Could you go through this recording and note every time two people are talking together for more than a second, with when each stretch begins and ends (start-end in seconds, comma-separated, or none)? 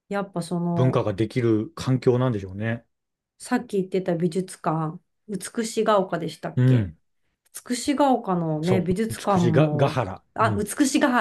8.6-10.7